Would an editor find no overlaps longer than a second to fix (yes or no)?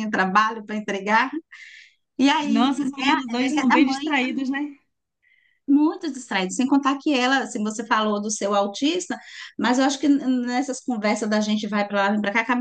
no